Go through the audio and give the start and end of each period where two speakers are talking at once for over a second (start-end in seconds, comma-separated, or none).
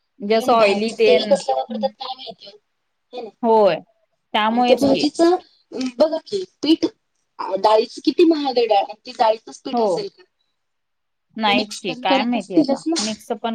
11.4-13.1